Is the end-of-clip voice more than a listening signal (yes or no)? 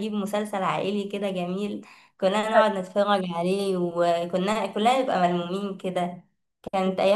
no